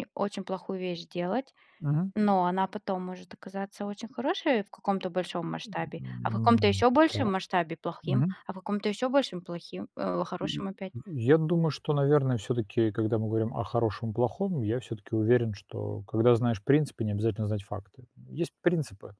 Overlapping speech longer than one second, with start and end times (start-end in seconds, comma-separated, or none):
5.7-7.3